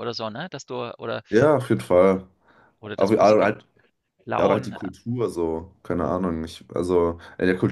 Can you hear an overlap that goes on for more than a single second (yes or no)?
no